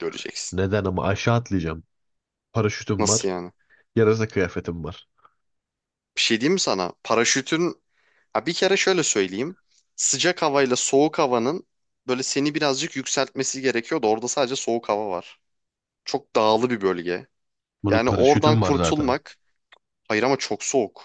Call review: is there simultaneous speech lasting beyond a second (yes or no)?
yes